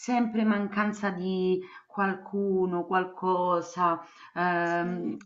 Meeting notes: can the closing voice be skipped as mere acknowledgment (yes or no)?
yes